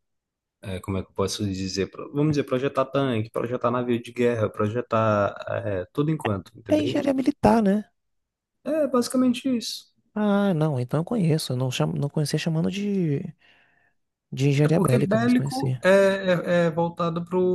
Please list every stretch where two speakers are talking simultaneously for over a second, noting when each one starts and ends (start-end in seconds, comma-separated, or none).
14.6-15.8